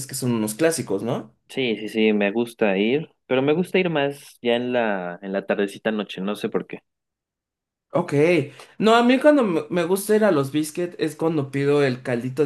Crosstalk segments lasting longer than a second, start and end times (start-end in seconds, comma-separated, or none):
none